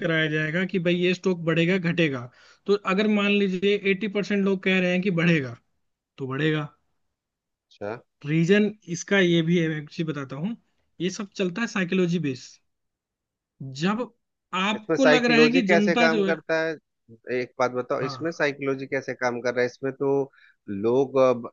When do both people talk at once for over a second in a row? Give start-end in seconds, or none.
14.8-16.4